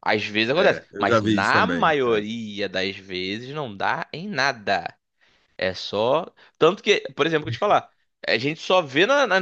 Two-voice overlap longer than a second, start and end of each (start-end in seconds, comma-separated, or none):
0.6-2.2